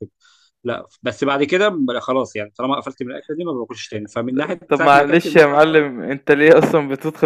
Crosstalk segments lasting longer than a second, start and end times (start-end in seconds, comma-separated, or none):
4.7-5.9